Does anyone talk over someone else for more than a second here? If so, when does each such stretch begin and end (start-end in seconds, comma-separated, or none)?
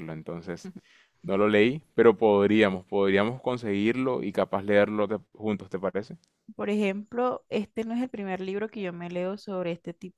none